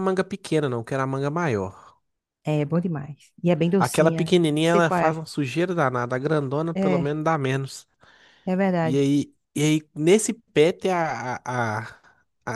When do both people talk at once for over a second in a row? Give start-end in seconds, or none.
3.8-5.2